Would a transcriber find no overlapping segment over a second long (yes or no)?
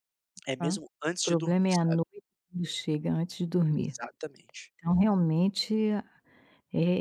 no